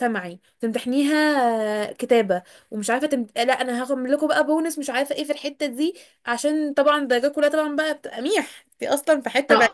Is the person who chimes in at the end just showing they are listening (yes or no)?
no